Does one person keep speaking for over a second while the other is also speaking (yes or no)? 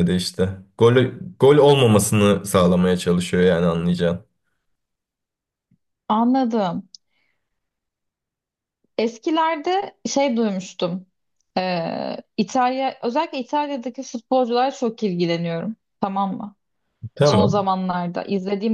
no